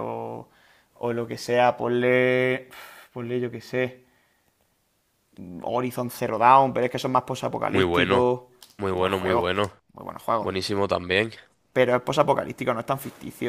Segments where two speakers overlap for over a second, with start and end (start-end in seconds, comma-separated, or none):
none